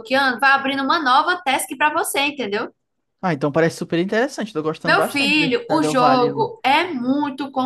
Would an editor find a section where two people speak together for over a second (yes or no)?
yes